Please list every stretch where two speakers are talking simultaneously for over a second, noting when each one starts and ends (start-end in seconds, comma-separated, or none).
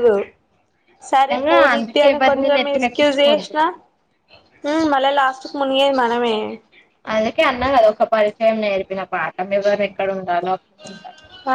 1.1-3.5